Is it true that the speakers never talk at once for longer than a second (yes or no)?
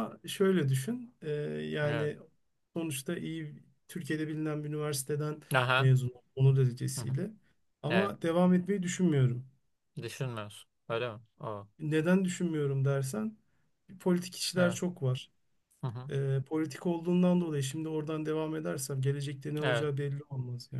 yes